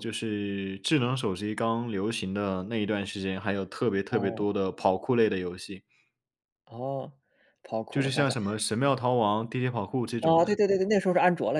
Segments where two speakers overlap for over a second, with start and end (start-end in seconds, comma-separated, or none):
none